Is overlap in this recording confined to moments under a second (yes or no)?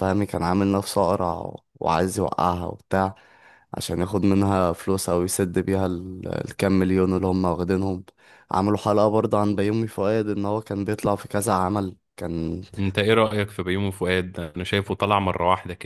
yes